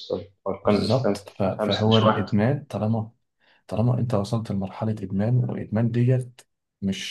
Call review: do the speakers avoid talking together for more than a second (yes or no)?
no